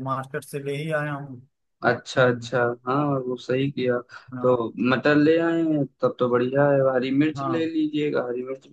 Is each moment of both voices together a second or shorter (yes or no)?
yes